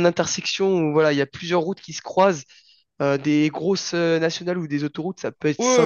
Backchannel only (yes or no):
no